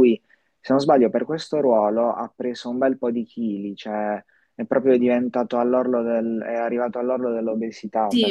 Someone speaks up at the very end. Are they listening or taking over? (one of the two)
taking over